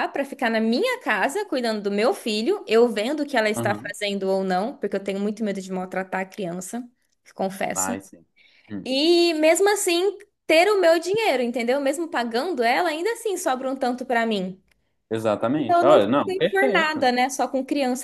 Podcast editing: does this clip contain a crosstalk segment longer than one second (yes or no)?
yes